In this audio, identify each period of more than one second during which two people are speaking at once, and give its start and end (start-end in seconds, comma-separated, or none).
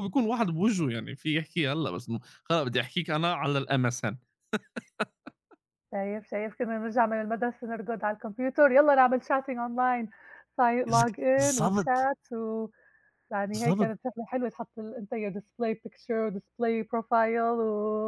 10.9-12.1